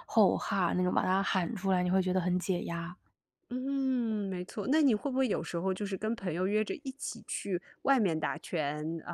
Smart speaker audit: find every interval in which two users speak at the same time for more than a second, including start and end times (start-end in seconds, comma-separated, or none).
none